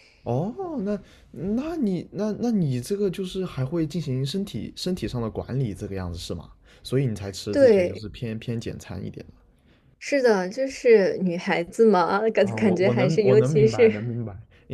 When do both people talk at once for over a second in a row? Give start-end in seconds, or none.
12.4-13.9